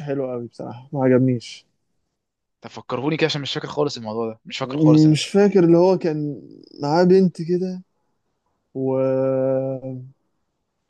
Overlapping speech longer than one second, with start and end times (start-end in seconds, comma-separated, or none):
none